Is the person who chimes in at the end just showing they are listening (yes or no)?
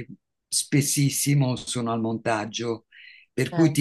yes